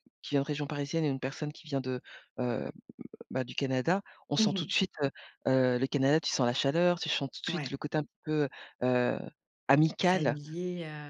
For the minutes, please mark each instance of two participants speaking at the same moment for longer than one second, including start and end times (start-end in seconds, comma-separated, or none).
none